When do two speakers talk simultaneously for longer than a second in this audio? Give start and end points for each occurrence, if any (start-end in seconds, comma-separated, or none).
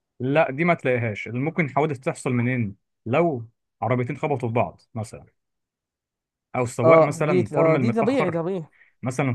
6.8-8.4